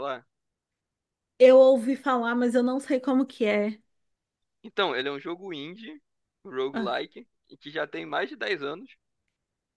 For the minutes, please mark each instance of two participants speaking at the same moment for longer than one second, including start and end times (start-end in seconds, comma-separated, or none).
none